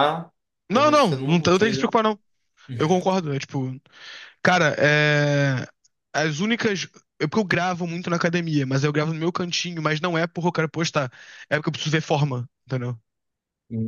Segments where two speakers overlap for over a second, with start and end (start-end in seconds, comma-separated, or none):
0.7-1.9